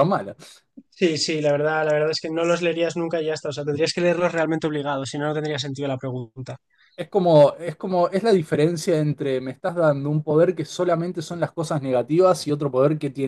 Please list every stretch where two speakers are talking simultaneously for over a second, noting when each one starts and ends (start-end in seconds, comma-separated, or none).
none